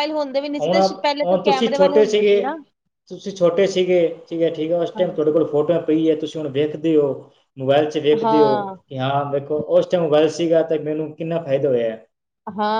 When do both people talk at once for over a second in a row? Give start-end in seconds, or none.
0.6-2.4